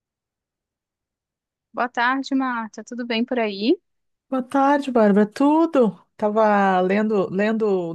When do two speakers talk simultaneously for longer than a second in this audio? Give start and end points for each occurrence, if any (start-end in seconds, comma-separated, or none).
none